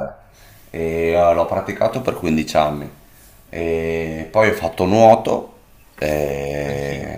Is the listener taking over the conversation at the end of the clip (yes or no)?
no